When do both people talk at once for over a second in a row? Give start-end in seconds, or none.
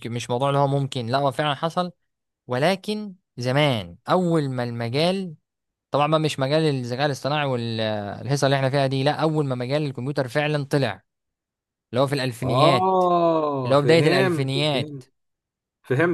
13.6-15.0